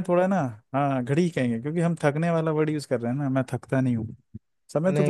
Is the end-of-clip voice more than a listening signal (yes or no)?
yes